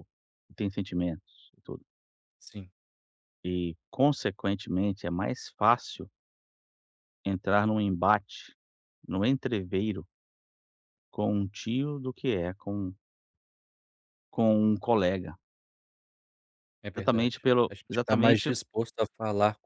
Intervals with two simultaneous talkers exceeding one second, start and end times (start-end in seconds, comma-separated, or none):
16.9-18.5